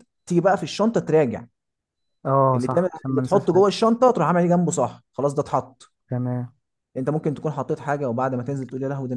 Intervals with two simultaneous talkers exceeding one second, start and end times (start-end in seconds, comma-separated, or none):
2.5-3.8